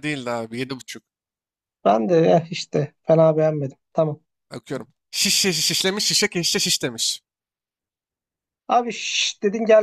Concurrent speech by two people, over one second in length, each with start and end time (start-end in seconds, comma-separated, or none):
none